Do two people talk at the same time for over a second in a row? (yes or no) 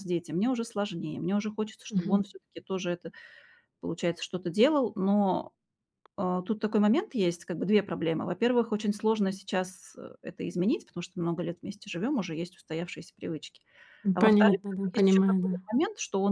yes